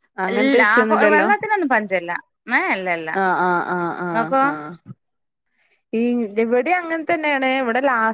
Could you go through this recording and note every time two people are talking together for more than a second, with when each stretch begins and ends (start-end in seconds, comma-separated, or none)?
none